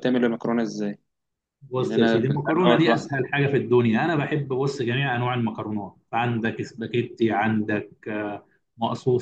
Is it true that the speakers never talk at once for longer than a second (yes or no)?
no